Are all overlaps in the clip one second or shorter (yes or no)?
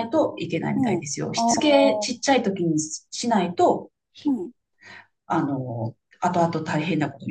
no